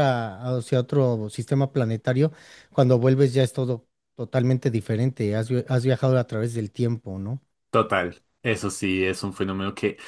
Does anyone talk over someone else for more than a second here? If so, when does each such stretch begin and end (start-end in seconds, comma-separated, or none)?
none